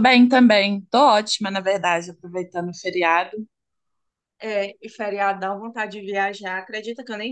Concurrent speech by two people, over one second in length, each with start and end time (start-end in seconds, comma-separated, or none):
none